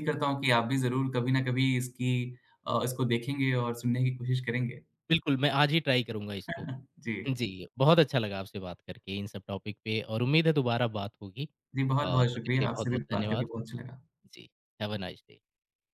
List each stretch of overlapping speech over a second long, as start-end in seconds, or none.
12.0-13.5